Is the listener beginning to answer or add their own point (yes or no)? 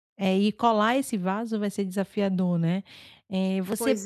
no